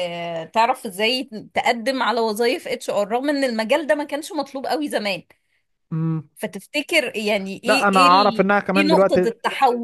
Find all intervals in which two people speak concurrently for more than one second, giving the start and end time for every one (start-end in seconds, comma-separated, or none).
7.7-9.3